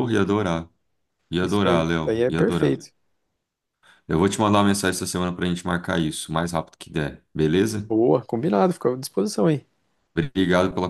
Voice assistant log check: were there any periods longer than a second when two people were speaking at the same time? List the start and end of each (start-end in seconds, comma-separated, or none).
1.4-2.8